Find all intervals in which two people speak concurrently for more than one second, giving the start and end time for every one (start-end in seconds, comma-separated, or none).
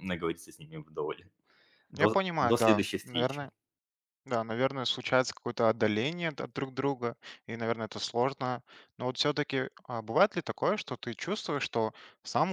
2.0-3.5